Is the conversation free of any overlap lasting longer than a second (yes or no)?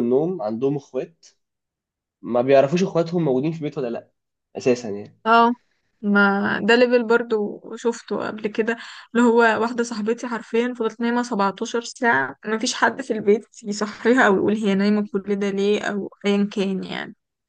yes